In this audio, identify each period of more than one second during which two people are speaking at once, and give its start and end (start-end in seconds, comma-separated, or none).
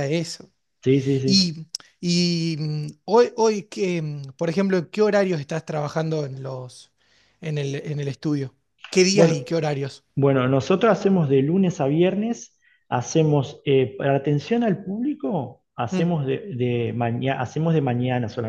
none